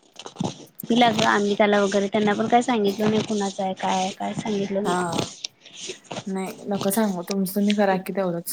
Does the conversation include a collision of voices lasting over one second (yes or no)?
no